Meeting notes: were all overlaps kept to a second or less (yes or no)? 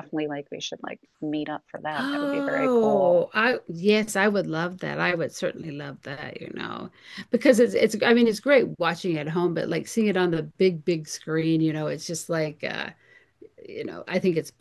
no